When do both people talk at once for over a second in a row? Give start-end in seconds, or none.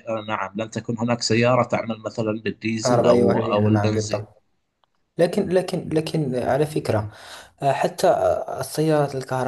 2.8-4.2